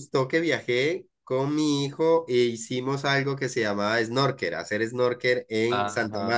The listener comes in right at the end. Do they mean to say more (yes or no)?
yes